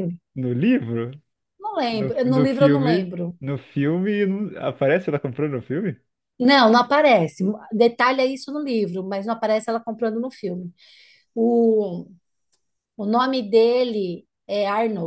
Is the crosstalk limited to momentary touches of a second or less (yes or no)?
no